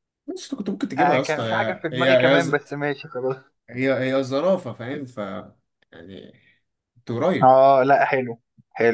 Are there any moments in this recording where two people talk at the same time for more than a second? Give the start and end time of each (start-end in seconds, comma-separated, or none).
1.0-2.5